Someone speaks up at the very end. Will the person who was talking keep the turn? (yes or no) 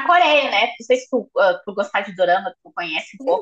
no